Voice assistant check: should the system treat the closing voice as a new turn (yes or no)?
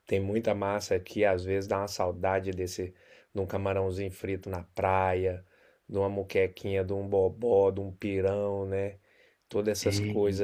no